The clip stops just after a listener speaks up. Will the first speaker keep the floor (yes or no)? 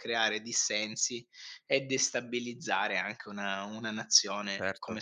no